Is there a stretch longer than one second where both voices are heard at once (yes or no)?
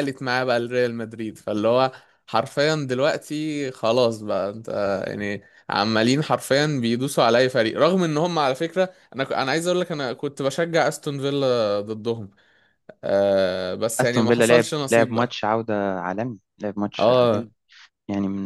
yes